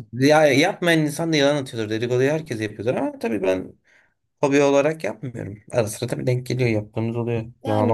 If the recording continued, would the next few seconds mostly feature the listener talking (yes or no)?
yes